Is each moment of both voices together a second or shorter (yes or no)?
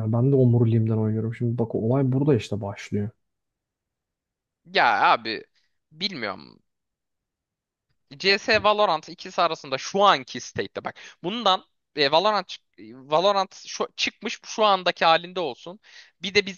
yes